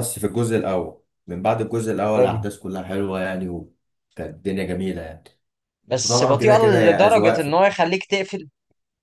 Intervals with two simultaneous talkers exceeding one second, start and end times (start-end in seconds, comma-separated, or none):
6.0-7.6